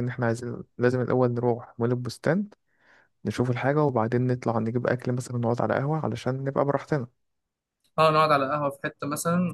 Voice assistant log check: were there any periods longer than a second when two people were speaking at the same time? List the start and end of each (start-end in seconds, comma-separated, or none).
none